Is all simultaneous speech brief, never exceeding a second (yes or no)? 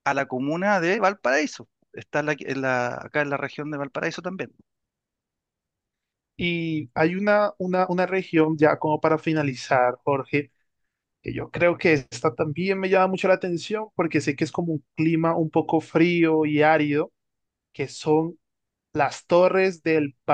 yes